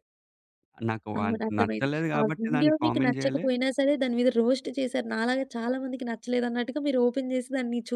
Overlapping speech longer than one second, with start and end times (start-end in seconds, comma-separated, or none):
1.2-3.5